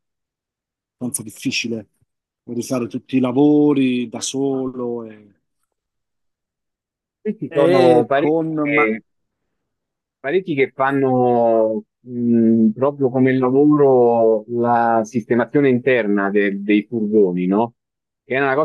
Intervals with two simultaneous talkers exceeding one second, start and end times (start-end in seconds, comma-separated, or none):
7.5-8.8